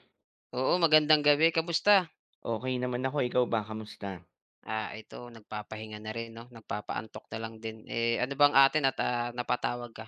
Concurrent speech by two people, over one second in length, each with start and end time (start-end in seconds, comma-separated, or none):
none